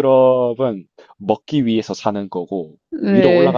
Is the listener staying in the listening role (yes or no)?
yes